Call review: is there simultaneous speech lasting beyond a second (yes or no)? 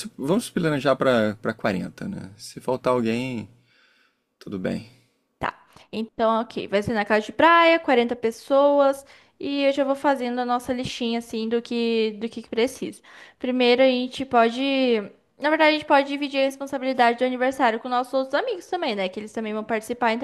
no